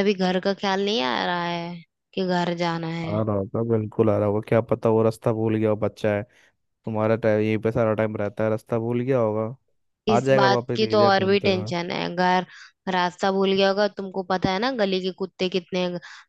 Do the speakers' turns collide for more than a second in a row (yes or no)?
yes